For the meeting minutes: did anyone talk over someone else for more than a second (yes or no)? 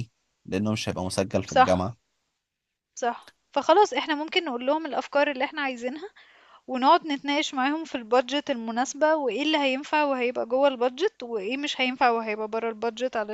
no